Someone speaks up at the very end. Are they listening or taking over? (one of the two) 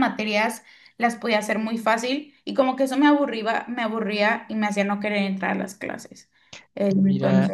taking over